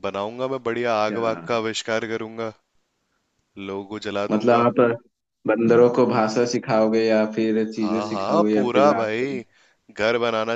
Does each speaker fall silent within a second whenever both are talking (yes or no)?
no